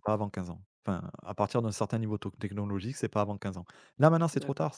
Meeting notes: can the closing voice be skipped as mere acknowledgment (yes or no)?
yes